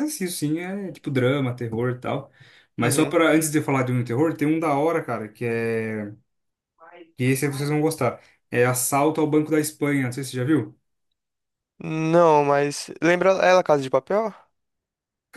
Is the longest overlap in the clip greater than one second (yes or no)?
no